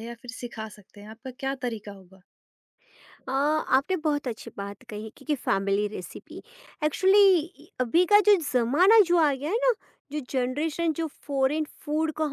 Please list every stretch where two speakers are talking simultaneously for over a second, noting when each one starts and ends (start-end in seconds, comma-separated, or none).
none